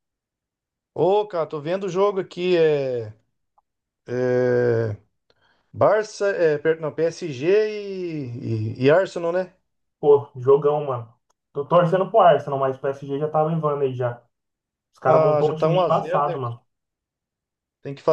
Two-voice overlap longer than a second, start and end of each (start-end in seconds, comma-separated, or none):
15.1-16.4